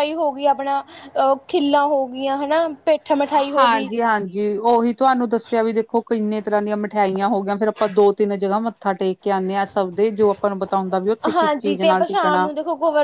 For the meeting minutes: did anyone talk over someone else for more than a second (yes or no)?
no